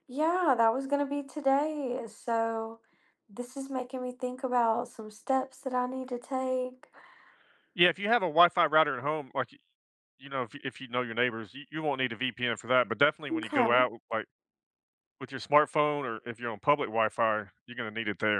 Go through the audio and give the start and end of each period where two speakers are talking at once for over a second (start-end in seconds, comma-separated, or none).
none